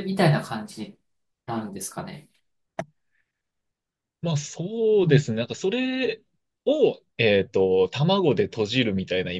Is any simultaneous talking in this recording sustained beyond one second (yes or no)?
no